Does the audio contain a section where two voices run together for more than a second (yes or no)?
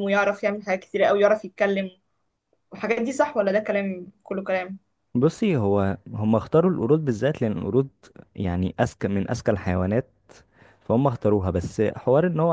no